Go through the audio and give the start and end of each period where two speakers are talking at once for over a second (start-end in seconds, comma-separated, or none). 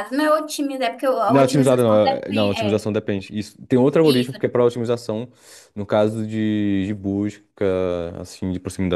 1.3-2.9